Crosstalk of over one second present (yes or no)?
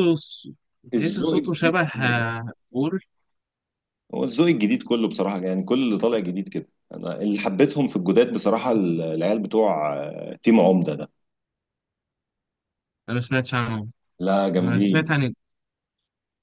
yes